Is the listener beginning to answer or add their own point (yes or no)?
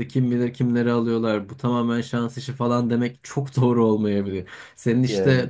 no